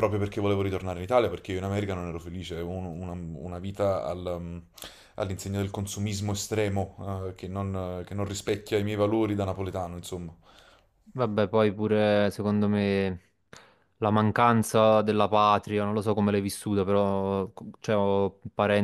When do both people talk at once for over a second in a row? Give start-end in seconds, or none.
none